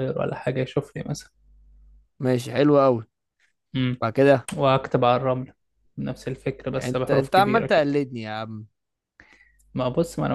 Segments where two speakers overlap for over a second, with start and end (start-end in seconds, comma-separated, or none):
6.7-7.9